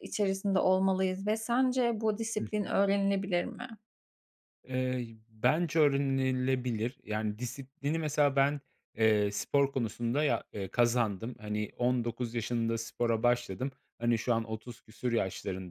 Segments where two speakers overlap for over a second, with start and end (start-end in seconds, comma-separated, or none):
none